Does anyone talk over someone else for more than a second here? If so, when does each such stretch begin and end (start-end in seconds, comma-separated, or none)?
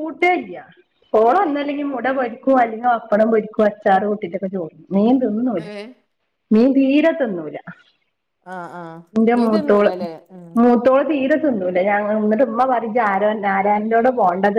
none